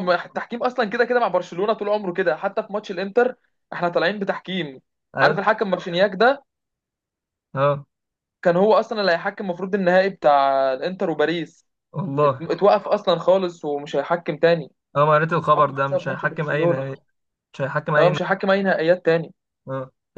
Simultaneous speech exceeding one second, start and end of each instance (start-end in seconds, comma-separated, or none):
15.6-16.9